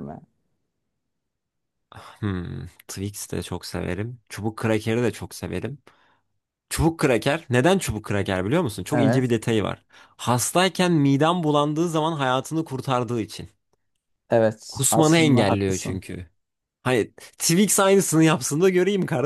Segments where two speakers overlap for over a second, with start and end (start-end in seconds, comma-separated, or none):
14.7-16.0